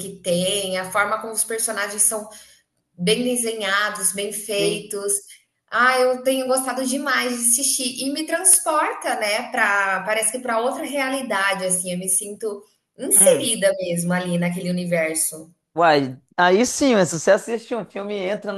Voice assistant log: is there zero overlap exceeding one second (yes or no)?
yes